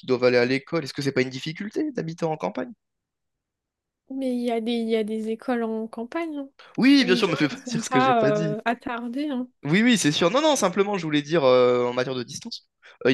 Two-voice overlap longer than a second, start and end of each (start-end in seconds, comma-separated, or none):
7.0-8.6